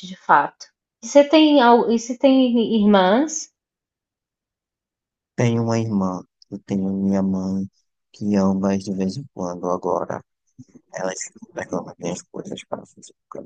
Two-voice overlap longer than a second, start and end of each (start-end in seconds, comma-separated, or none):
none